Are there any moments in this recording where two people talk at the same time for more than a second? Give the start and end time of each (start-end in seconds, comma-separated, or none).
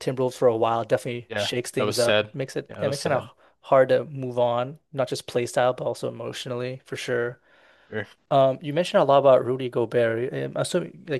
1.3-3.3